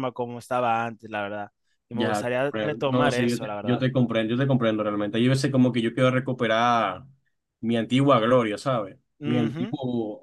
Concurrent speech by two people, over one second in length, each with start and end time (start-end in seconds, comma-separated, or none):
1.9-3.8